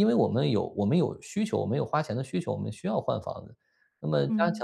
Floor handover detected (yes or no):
no